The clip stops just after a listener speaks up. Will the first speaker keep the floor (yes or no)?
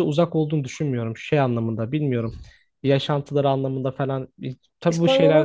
no